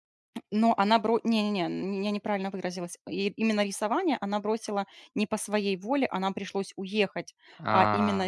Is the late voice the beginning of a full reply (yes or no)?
no